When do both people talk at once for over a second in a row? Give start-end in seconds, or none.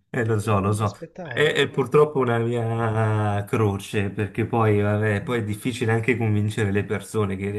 0.5-2.3